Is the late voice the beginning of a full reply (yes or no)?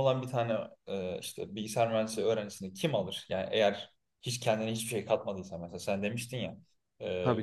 no